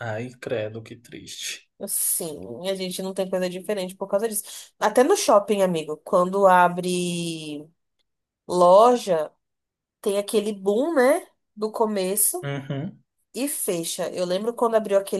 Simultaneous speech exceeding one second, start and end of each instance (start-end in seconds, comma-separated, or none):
none